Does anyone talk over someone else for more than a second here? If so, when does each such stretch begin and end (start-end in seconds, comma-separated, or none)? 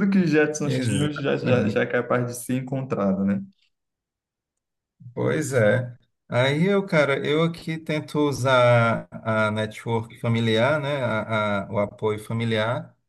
0.6-1.9